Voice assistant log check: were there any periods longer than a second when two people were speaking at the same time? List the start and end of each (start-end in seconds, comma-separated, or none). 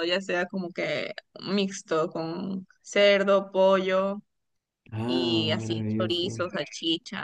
5.0-6.4